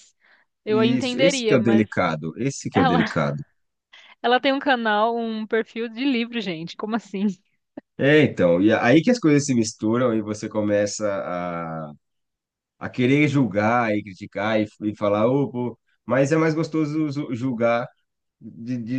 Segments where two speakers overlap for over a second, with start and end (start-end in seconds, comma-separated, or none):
0.7-2.0